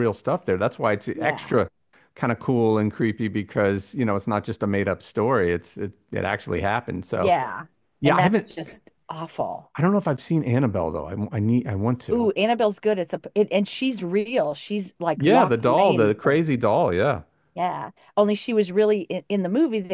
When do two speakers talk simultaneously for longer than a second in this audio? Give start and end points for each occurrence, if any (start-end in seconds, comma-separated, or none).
15.2-16.5